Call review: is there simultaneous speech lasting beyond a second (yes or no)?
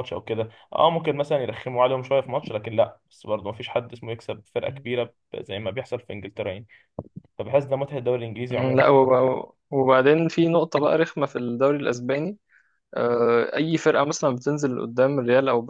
no